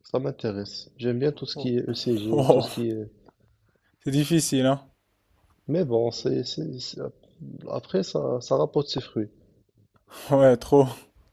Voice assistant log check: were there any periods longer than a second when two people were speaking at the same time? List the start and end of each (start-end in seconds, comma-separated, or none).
none